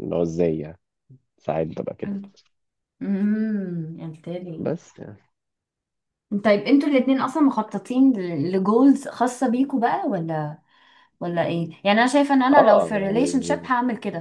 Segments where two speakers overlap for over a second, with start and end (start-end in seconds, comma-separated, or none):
12.5-13.7